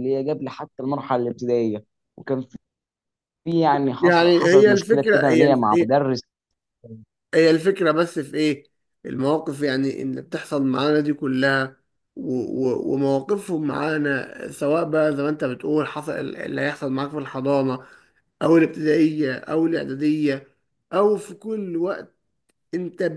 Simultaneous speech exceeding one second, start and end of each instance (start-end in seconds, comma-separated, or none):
4.0-5.9